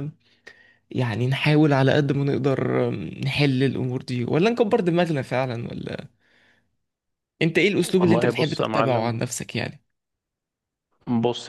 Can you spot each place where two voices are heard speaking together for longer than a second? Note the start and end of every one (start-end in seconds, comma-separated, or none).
7.8-9.1